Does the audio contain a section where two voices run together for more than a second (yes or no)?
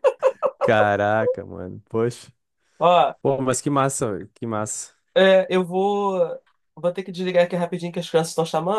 no